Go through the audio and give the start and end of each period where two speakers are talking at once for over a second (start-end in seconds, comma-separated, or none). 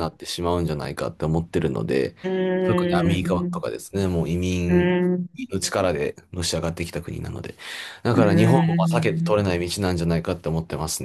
8.1-9.5